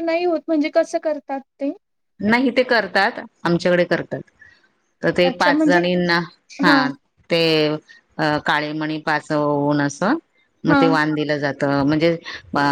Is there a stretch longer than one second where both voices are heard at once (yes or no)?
no